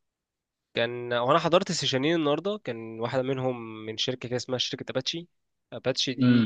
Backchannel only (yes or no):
no